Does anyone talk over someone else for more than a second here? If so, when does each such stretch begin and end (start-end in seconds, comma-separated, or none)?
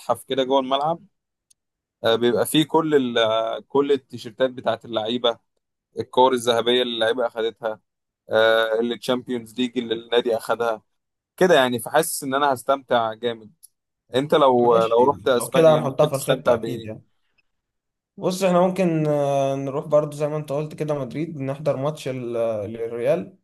14.6-16.9